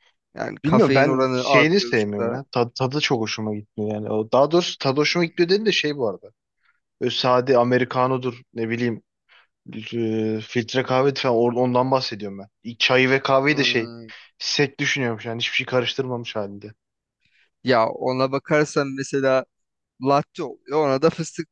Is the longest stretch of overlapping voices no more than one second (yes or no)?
no